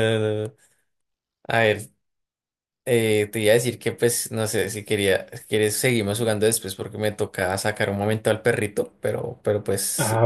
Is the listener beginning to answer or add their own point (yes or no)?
yes